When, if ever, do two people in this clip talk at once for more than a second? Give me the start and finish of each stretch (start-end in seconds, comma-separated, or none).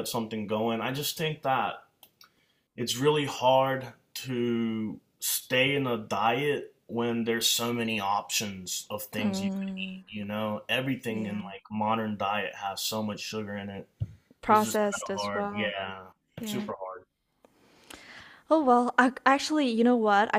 14.5-15.7